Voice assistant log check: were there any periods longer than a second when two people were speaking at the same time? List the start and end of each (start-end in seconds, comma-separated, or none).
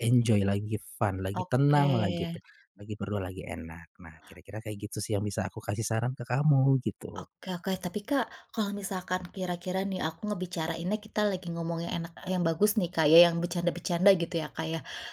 none